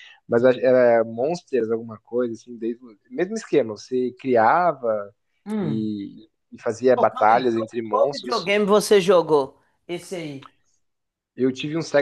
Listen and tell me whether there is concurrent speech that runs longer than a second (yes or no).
yes